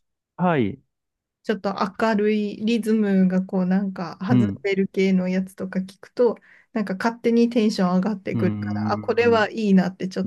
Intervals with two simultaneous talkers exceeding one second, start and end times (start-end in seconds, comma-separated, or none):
8.3-9.7